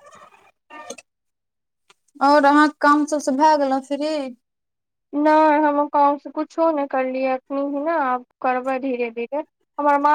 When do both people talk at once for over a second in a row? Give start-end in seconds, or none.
none